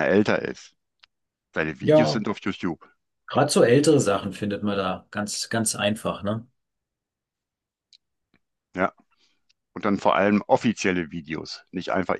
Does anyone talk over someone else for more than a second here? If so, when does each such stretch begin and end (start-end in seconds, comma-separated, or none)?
none